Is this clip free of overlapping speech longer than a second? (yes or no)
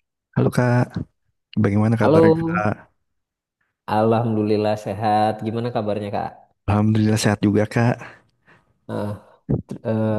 yes